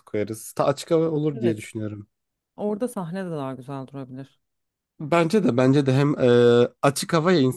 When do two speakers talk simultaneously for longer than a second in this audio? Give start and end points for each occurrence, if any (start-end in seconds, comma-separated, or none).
none